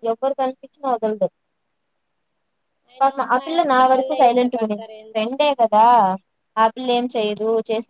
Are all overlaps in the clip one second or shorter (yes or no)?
no